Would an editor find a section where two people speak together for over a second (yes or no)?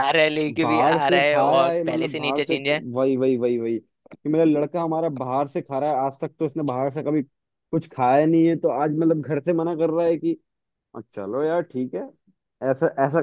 yes